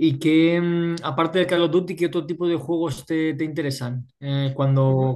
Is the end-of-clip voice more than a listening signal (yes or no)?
no